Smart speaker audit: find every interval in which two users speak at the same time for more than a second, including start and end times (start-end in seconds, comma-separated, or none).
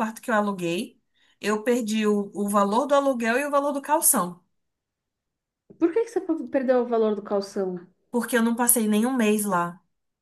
none